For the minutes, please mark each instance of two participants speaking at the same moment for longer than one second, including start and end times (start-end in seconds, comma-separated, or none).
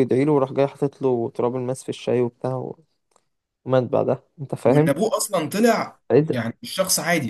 none